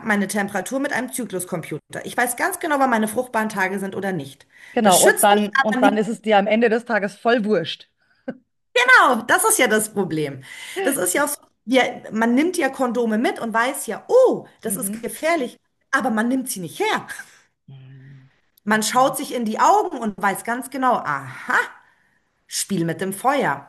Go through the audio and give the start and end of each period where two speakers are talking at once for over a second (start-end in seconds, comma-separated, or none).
4.7-6.0